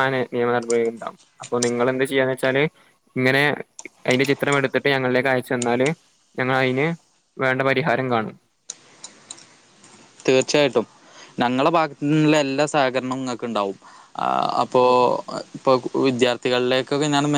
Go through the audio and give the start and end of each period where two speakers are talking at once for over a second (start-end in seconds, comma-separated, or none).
none